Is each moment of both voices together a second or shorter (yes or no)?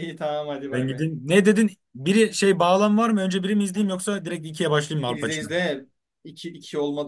yes